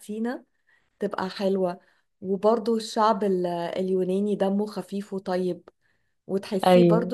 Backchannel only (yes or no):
yes